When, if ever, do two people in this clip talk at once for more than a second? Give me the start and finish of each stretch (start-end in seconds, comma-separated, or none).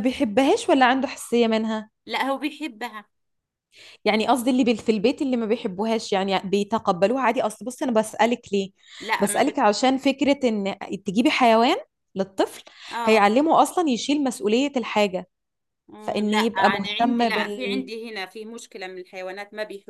16.0-17.9